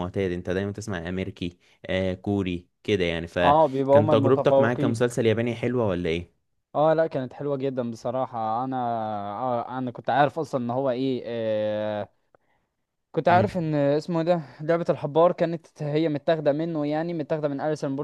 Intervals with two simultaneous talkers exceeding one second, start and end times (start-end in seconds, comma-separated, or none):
3.4-5.0